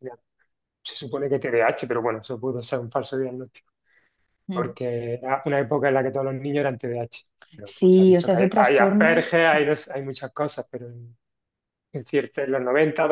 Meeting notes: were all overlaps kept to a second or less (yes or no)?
no